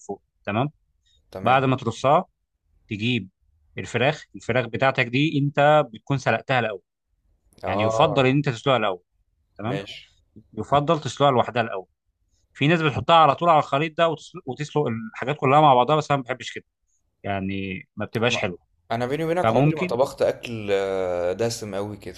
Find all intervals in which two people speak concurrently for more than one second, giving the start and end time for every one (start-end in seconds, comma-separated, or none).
none